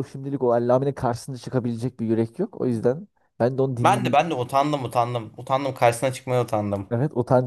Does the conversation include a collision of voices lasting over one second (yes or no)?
no